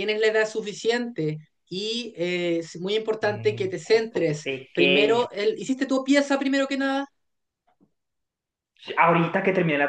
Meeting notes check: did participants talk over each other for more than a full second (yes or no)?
yes